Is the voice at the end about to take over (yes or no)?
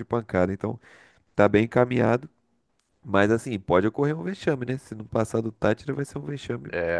yes